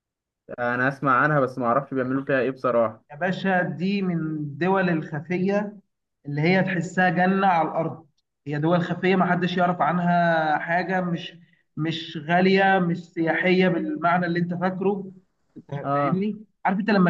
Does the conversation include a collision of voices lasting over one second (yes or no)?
no